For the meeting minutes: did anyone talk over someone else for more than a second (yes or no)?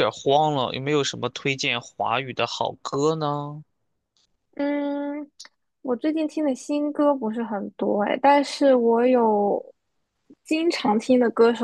no